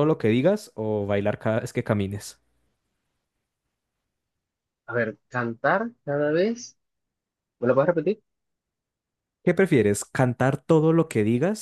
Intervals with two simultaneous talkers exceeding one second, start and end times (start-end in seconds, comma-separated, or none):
none